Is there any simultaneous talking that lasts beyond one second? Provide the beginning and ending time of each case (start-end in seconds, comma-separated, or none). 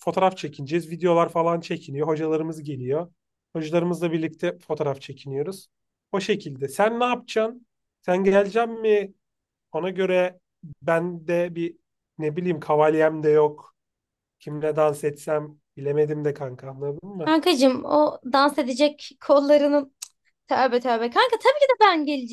none